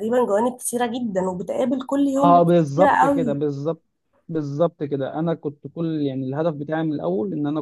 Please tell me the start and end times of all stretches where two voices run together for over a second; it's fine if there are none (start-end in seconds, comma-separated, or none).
2.0-3.5